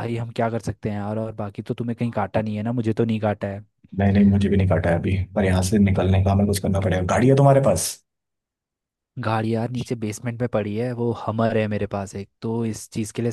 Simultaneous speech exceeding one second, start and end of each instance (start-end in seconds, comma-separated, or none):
none